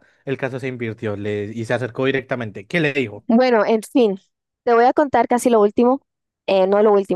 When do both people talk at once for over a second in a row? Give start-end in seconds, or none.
none